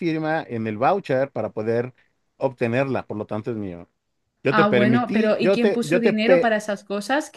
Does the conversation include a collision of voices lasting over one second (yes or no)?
yes